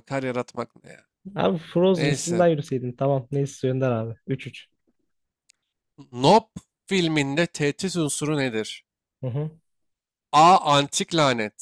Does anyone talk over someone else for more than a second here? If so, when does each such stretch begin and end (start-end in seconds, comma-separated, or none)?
none